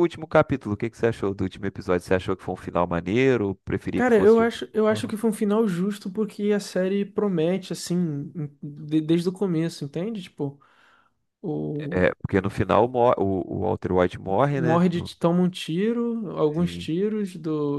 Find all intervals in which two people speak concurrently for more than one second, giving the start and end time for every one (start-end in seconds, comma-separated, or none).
3.9-5.1